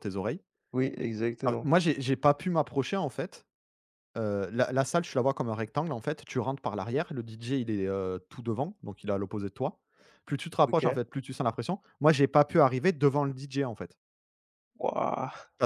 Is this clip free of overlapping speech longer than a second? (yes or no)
yes